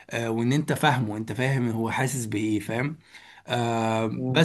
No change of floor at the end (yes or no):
no